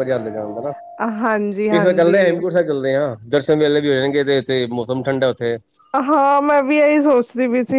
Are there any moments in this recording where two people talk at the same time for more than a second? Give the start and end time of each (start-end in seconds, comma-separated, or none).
none